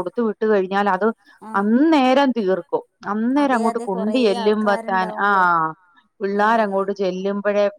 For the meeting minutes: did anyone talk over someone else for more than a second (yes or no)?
yes